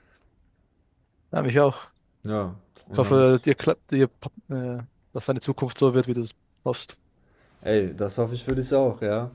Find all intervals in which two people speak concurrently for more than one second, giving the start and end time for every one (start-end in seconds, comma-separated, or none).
none